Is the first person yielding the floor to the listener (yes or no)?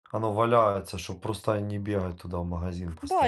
yes